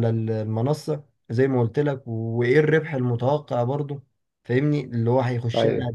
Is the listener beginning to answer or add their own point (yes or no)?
no